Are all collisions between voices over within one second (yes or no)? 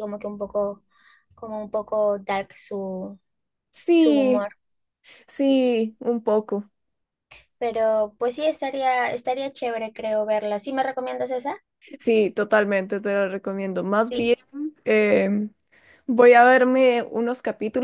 yes